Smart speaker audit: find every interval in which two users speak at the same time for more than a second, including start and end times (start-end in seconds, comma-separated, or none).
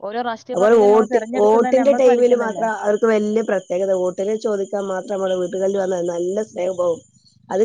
0.5-2.6